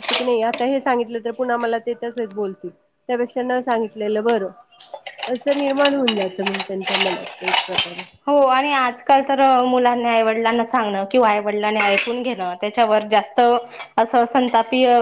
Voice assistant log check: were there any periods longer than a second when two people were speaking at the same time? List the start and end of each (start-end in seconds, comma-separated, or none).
none